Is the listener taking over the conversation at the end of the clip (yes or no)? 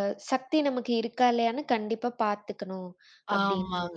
yes